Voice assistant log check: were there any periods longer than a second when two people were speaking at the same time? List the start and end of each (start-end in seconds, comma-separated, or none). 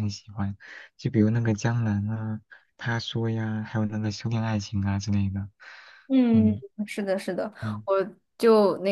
none